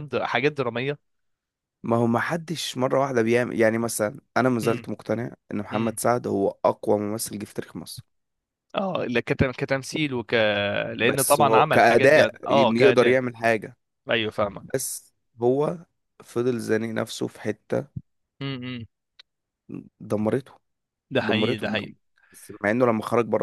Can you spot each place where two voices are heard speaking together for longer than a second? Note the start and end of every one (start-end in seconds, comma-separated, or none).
11.0-13.2